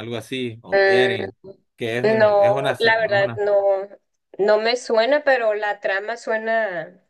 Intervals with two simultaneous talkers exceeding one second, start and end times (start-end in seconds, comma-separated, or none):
1.8-3.4